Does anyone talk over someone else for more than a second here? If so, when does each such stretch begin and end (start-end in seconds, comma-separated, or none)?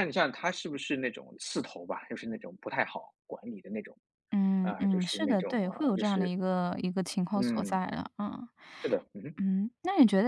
4.6-6.3